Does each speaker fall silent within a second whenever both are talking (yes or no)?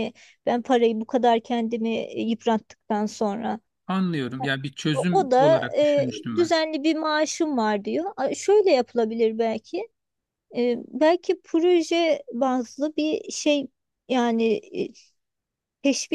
no